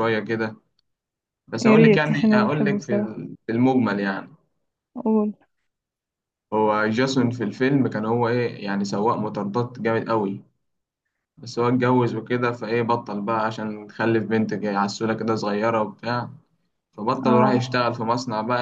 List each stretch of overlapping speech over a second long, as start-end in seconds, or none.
1.6-3.2